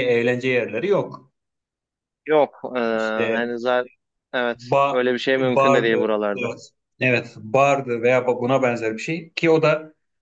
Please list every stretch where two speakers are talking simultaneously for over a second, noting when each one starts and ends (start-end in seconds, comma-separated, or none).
4.5-6.5